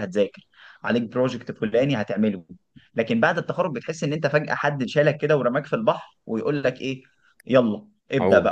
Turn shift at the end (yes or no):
no